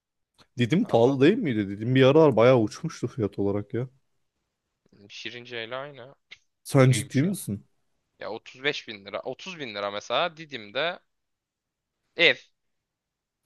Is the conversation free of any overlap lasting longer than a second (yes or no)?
yes